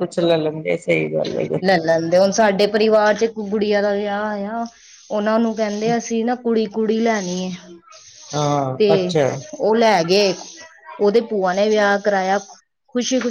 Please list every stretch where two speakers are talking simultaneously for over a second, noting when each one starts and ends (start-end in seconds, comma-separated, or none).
none